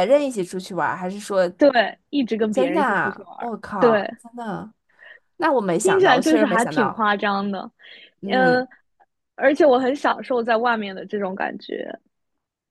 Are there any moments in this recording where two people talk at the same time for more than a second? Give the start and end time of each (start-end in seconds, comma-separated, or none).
2.5-4.1, 5.8-7.0